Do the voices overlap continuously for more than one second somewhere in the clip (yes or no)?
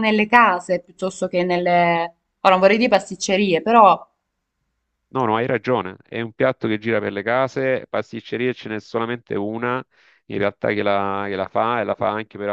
no